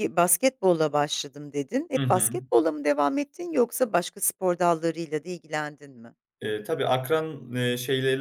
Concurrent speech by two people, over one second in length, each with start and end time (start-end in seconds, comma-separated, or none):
none